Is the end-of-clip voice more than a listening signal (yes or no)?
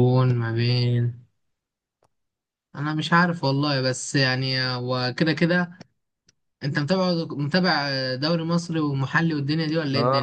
yes